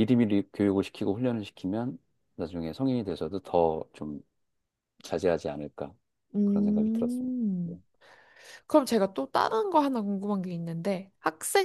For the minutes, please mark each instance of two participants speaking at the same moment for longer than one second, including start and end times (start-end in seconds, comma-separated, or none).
6.4-7.8